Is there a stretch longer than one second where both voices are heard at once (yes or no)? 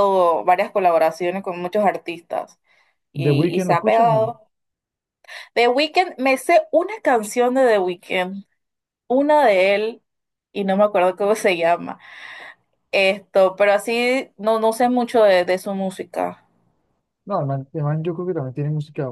yes